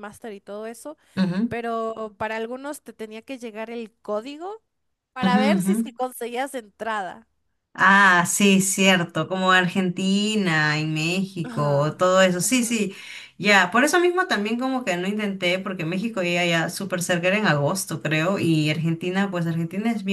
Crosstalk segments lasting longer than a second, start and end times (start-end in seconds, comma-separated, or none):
11.4-12.8